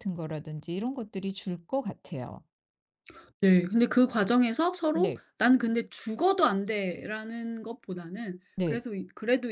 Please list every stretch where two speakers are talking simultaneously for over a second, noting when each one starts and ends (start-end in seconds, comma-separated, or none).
none